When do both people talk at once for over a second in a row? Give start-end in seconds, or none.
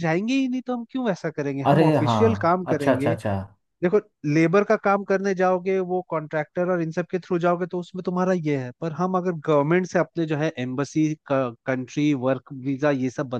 1.7-3.1